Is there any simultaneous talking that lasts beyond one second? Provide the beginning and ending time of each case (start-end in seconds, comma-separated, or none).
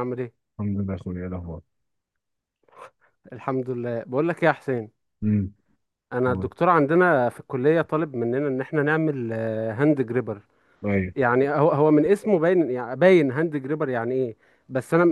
none